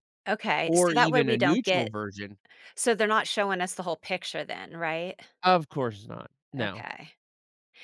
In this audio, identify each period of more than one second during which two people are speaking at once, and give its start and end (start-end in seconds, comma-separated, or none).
0.7-1.9